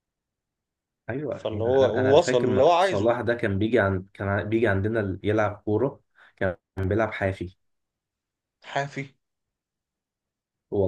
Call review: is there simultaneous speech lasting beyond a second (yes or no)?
yes